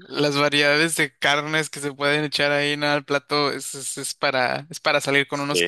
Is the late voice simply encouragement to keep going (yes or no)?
yes